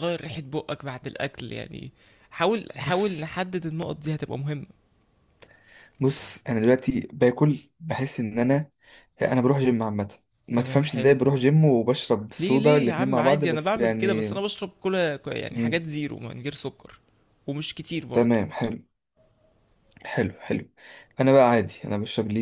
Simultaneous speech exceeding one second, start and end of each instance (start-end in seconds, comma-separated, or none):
12.4-14.3